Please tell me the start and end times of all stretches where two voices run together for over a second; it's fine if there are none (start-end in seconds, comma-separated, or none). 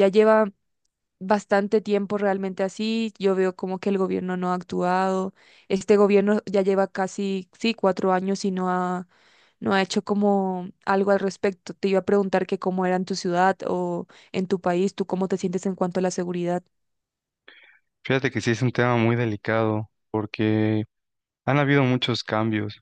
none